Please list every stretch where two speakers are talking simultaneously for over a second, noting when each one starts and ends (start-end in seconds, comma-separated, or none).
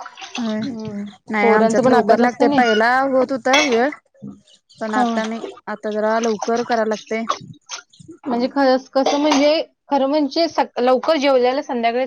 1.4-2.6